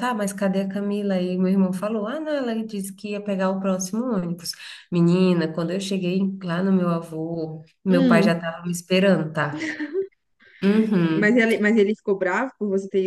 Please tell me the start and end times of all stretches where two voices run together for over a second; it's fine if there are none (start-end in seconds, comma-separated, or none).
none